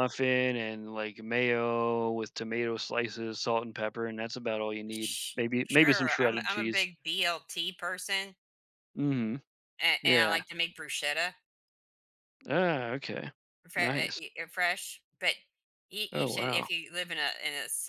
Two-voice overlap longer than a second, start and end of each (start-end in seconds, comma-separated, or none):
4.9-6.9